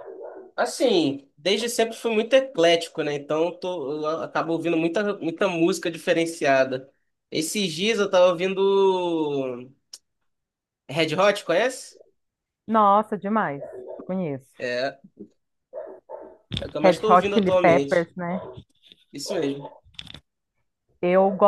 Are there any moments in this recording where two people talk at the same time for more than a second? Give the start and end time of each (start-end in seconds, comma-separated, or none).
16.8-18.1